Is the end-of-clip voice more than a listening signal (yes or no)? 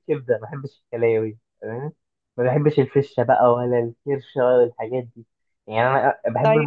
no